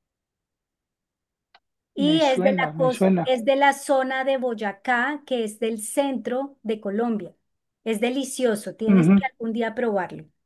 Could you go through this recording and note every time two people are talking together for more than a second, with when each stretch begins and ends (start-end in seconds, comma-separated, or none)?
2.0-3.3